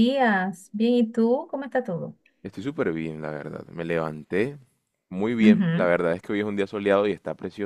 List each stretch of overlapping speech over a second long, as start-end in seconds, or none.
none